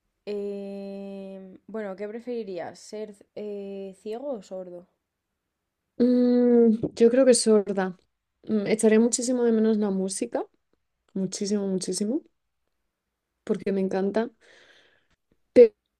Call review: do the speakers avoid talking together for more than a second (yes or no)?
yes